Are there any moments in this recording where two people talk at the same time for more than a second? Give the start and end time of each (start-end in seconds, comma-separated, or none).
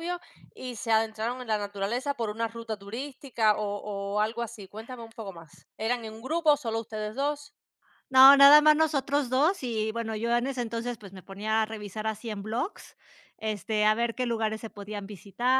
none